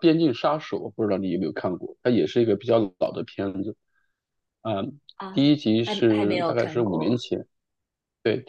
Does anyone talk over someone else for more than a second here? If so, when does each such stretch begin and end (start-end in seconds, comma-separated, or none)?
5.3-7.2